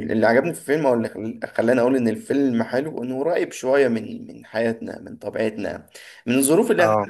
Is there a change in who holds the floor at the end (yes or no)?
no